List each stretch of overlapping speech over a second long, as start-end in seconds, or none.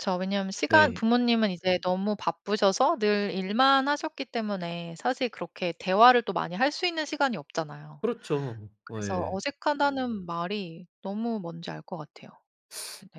none